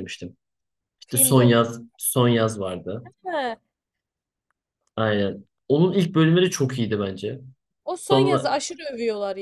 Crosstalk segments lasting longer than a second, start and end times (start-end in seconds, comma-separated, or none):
none